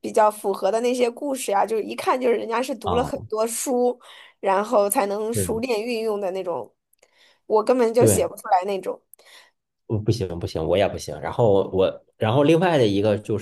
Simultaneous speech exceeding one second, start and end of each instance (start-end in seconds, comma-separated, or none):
none